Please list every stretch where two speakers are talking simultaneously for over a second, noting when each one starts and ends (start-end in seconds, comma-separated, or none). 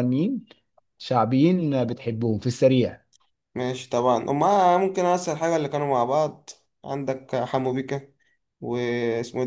none